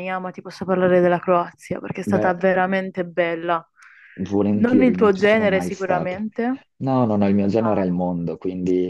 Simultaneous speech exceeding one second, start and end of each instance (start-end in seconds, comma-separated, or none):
4.5-6.2